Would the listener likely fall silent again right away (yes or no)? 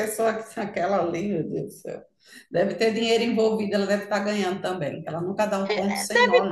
no